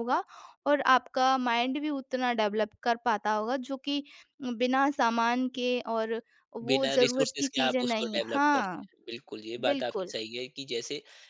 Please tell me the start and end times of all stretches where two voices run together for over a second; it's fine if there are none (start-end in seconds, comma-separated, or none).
6.7-8.9